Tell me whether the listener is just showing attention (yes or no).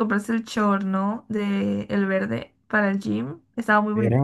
no